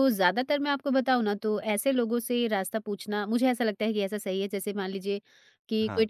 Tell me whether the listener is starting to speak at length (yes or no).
no